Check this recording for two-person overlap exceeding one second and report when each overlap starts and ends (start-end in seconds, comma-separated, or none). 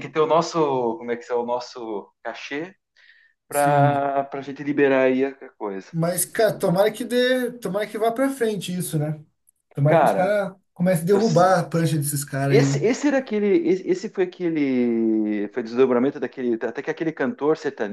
none